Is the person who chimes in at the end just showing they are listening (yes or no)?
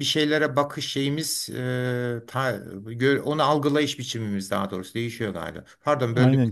no